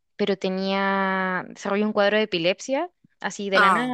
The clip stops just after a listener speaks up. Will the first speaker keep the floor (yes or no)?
yes